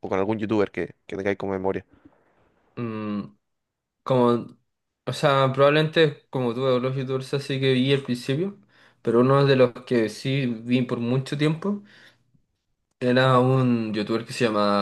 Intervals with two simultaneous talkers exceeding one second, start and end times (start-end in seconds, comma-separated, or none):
none